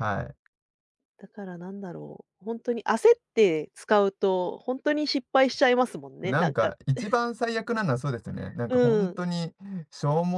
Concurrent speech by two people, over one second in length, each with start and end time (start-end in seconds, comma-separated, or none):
none